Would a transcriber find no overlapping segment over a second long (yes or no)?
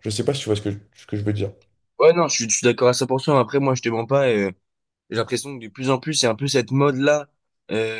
yes